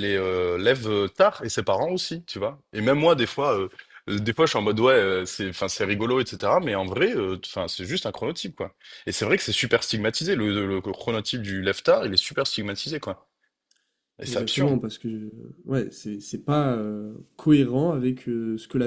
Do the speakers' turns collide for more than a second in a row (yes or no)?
no